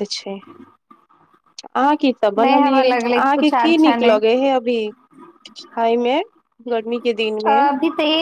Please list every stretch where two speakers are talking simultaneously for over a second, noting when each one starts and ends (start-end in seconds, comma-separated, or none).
2.4-4.2